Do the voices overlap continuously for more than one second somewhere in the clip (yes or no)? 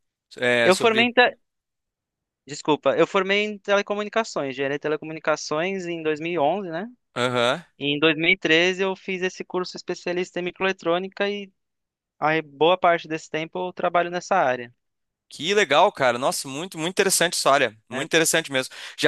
no